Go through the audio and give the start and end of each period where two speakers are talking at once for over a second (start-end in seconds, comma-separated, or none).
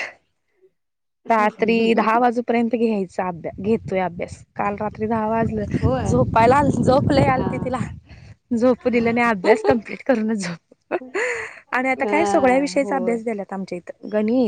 12.0-13.2